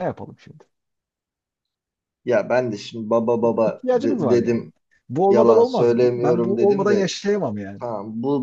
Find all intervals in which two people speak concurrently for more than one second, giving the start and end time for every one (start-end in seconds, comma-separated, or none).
3.4-4.6, 5.3-7.1